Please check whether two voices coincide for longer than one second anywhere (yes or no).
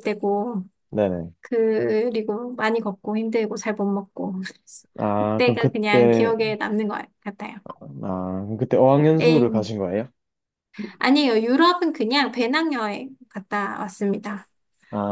yes